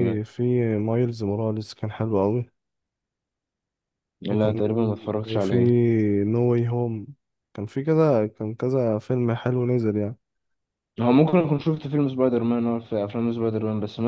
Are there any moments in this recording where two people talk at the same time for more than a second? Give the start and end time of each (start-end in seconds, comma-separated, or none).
none